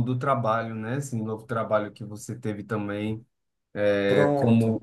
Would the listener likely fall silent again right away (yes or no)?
yes